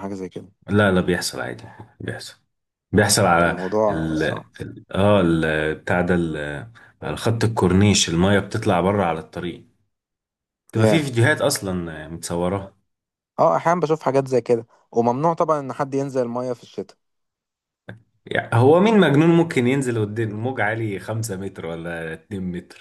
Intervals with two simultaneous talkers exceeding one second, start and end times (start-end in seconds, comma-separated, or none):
none